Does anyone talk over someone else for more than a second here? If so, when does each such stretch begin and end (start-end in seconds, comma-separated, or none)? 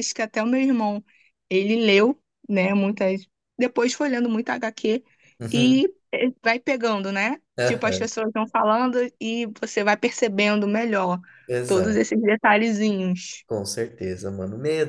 none